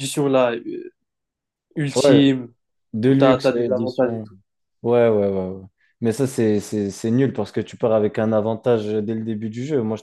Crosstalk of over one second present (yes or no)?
yes